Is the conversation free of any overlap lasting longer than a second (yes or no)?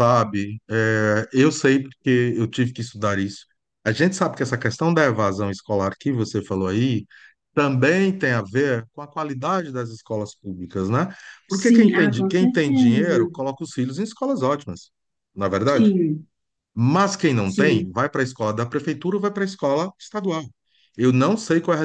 no